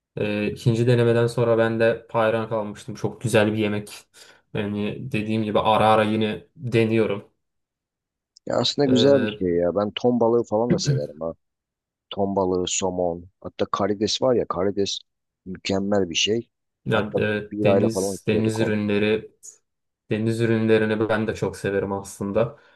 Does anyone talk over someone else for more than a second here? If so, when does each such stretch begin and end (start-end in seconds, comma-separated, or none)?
16.9-18.8